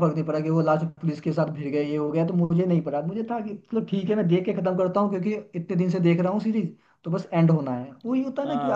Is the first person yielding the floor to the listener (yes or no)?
yes